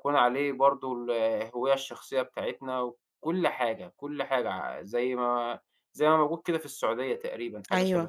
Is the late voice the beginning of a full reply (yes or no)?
yes